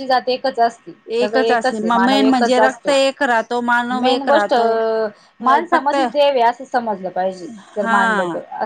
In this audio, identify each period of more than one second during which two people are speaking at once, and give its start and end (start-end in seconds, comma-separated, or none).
1.5-3.0